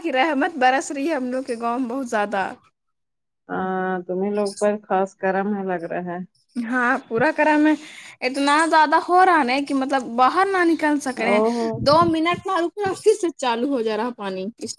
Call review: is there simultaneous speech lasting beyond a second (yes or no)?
no